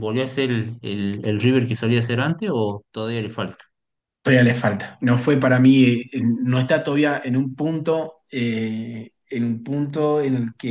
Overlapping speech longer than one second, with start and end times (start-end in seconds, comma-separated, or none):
none